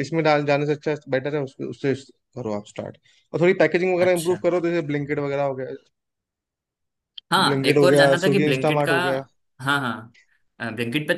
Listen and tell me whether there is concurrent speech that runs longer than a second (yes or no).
yes